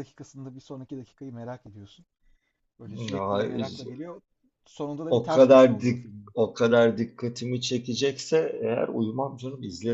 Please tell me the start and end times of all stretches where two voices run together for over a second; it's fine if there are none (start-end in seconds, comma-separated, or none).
5.1-6.3